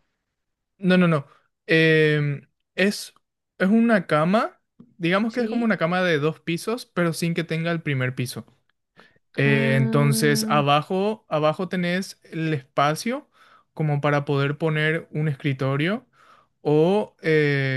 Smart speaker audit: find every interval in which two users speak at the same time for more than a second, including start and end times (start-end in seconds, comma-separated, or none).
9.4-10.6